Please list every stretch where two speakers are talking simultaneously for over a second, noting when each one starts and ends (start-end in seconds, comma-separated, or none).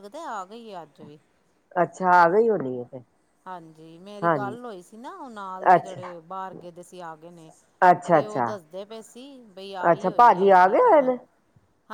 none